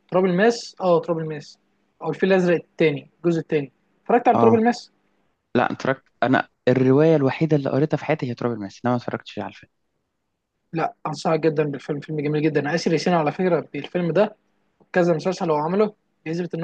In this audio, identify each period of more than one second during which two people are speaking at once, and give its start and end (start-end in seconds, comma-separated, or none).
none